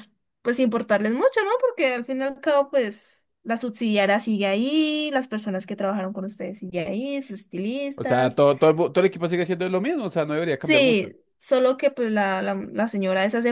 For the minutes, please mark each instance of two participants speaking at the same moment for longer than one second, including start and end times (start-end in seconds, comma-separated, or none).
none